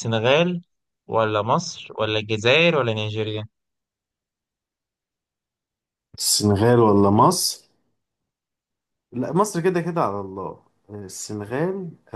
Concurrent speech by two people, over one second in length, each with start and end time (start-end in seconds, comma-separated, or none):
none